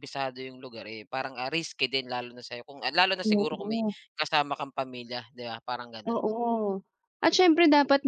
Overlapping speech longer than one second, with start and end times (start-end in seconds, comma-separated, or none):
none